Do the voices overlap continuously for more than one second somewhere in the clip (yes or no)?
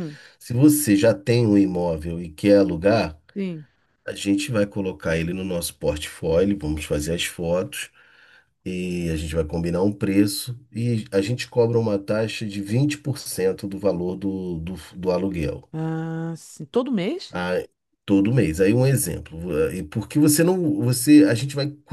no